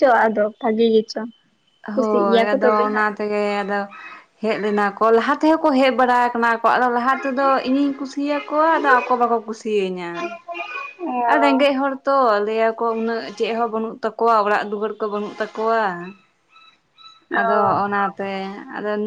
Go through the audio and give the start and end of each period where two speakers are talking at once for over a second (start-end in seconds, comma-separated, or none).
none